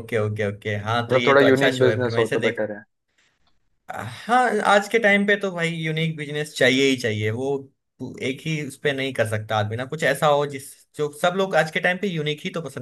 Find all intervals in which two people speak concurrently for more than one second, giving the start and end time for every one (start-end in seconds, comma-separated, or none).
1.1-2.6